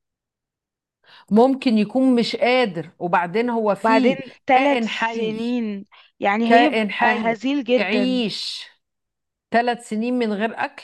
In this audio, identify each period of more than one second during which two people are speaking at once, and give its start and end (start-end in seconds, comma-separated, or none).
3.8-5.4, 6.4-8.2